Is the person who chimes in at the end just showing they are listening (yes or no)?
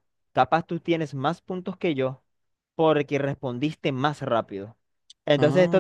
yes